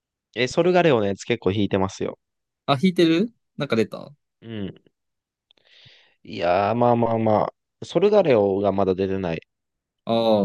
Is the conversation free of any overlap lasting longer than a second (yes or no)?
yes